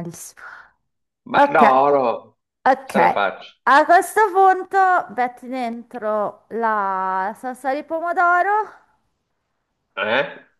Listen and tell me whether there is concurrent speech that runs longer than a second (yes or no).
no